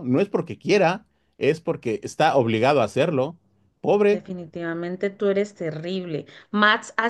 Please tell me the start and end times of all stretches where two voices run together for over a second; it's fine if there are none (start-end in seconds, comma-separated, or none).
none